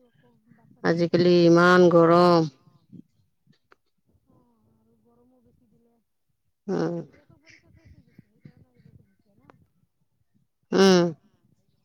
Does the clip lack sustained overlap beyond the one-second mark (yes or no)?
no